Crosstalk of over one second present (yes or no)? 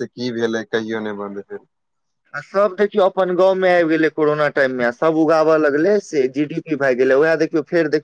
no